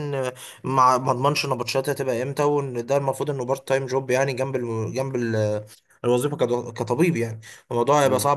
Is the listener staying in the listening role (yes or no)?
yes